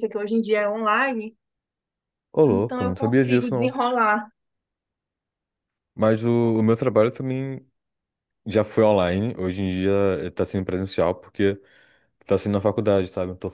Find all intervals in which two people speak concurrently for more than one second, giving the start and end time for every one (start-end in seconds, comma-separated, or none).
2.5-3.8